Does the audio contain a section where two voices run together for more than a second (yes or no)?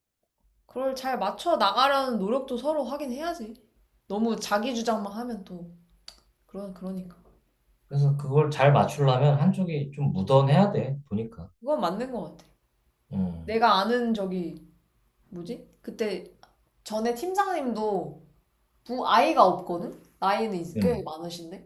no